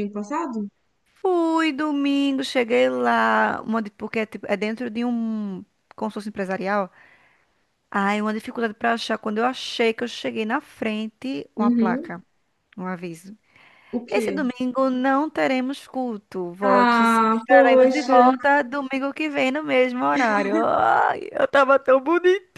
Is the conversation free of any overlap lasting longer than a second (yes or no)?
no